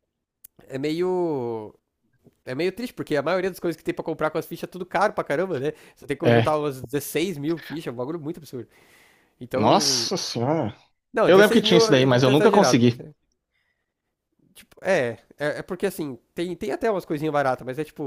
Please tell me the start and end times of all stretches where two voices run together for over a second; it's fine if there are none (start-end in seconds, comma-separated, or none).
11.2-13.1